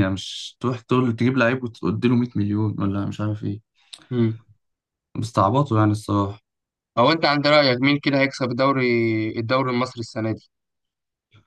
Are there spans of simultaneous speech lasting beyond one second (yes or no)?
no